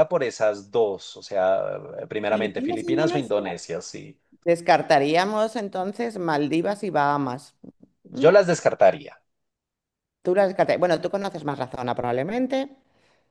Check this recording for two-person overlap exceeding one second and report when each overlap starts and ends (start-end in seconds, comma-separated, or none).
2.3-3.6